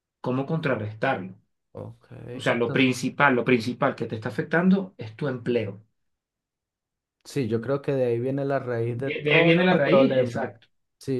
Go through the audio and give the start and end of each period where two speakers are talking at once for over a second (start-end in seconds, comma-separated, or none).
8.9-10.5